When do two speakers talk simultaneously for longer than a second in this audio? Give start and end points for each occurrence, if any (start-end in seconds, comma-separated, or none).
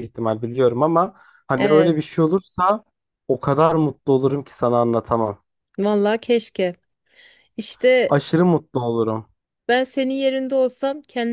none